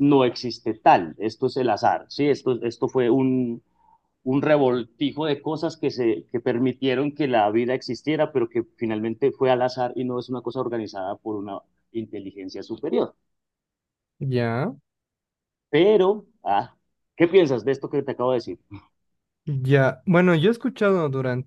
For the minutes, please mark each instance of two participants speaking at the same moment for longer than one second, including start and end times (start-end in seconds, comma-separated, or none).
none